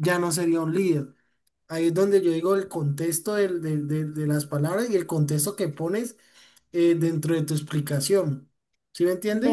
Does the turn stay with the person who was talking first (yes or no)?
no